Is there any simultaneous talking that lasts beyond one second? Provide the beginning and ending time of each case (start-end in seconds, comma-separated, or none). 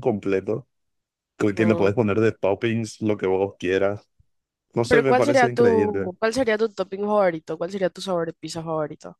4.9-6.1